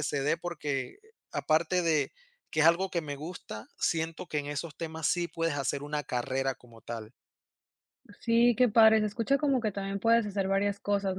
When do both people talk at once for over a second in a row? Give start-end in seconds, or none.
none